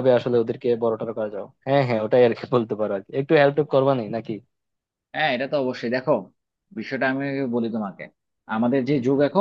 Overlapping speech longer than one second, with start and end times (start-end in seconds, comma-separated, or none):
none